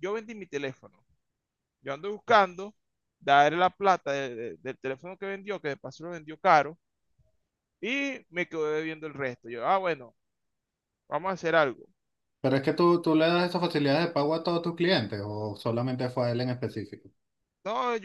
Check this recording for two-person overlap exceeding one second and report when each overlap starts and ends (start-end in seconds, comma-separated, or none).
none